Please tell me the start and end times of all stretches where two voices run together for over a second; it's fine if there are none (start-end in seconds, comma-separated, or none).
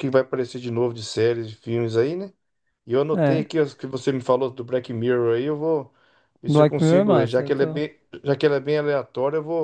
6.5-7.8